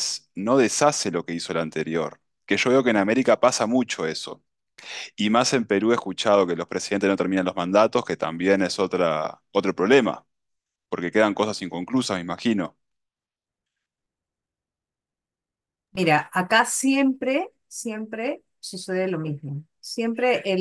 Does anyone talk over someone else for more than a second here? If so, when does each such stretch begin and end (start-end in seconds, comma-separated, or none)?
none